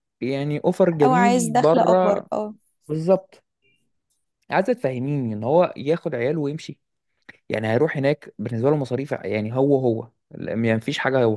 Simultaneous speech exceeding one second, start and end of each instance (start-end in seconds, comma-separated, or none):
1.0-2.3